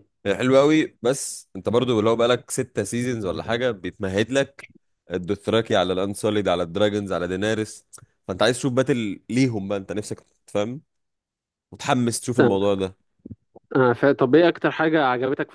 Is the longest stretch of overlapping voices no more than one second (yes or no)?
yes